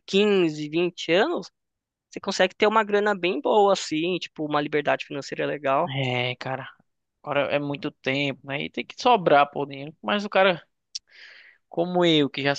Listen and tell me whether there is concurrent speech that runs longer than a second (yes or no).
no